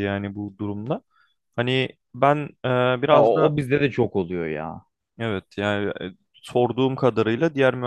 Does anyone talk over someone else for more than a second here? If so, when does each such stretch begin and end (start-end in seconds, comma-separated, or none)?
none